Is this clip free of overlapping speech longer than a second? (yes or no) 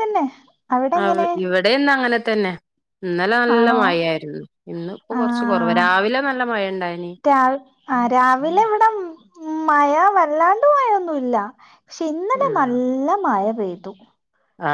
yes